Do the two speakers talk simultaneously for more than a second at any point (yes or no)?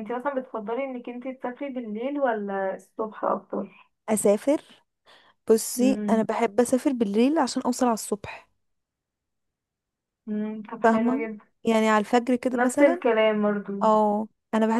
no